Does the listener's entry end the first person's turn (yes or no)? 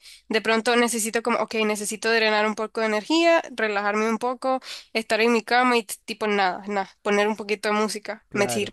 yes